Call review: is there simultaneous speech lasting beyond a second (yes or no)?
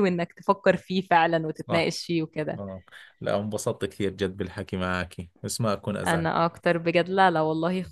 no